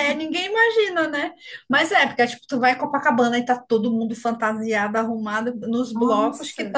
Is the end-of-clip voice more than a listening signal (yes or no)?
no